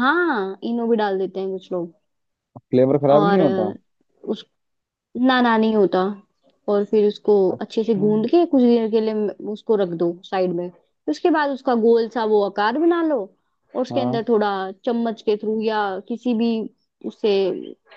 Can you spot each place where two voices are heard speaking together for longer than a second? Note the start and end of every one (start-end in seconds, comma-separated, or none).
none